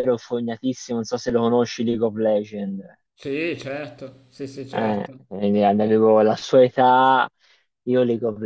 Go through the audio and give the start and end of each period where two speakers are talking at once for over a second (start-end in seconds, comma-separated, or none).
none